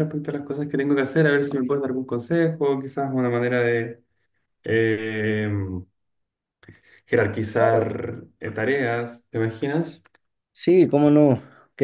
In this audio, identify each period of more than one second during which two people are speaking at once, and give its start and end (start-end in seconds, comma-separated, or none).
none